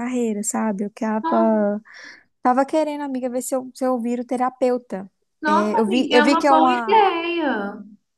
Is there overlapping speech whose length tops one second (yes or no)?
yes